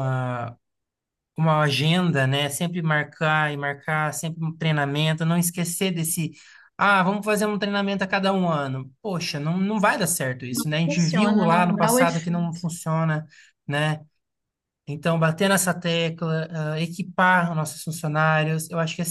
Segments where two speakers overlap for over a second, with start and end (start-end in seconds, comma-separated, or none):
10.5-12.6